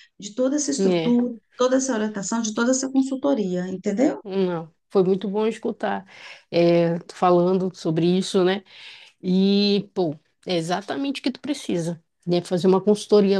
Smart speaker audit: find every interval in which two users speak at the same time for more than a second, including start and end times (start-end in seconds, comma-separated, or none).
none